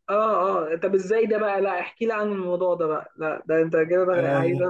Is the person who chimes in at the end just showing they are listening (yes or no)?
no